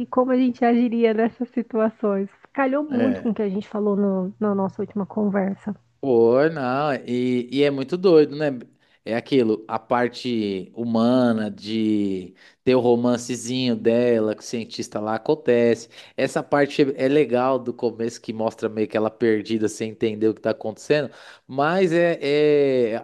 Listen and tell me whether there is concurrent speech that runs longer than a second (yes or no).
no